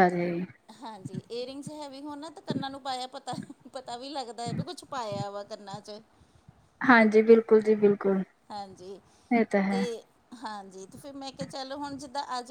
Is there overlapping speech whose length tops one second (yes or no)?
no